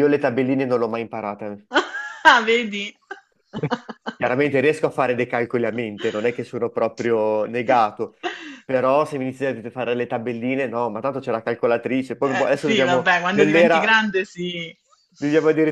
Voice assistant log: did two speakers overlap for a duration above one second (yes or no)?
yes